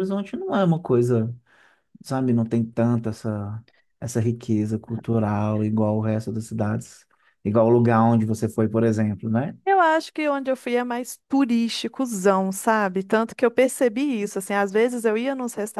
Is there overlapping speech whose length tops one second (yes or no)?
no